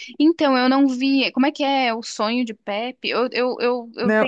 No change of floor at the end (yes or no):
no